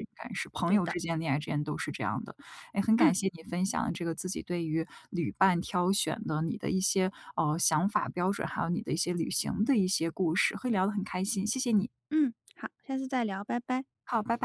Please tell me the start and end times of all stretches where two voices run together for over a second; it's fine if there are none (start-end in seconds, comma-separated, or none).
none